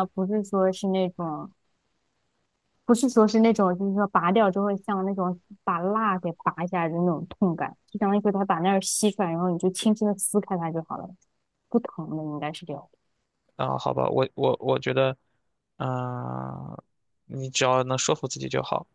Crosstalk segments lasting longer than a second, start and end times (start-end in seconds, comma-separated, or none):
none